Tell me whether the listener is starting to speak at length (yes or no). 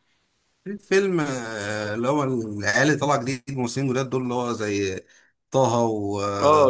yes